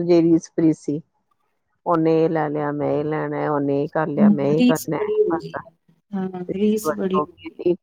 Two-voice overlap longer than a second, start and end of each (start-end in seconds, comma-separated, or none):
none